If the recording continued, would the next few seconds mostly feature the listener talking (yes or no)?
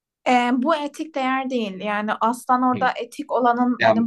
yes